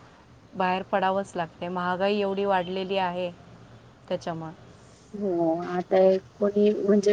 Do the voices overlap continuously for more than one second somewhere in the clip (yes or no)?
no